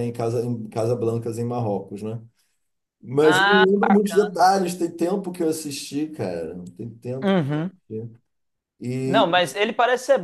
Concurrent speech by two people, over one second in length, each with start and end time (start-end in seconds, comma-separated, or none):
3.2-4.5